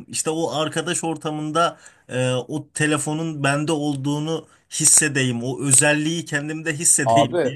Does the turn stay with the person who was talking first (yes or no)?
no